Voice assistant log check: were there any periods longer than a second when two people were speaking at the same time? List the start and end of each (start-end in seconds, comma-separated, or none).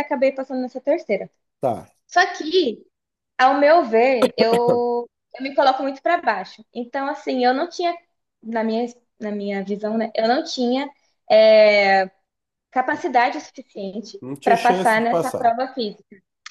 14.2-15.5